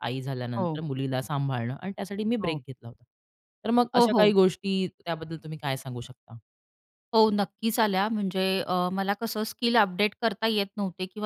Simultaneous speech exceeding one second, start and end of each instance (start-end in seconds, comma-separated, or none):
none